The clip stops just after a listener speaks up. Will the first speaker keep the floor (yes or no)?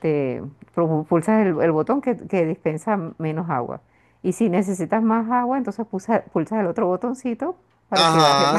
no